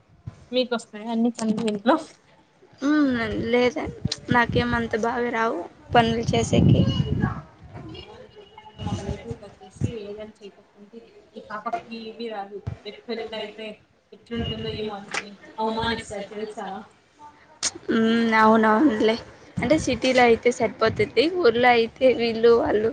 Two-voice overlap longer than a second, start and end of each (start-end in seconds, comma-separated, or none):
none